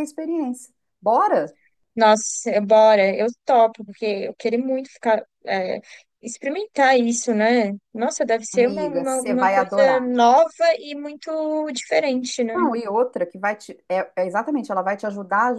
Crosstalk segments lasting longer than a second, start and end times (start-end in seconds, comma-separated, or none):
8.5-10.0